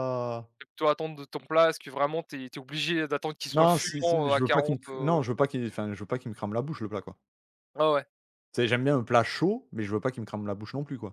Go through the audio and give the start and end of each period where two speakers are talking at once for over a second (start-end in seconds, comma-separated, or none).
3.5-5.2